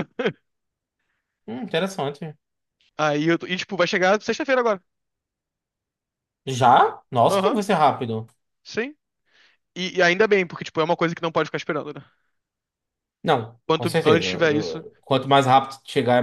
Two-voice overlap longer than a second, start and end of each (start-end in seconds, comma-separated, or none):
13.7-14.8